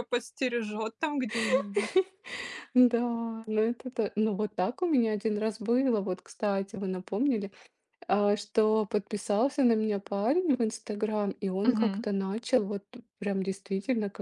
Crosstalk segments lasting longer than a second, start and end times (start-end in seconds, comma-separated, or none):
none